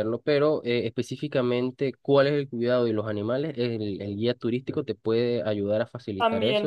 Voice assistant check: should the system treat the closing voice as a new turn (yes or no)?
yes